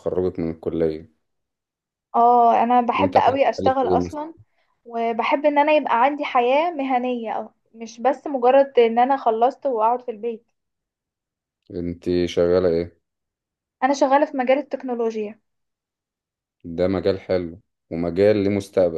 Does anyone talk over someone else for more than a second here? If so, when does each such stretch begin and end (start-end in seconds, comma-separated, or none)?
3.0-4.2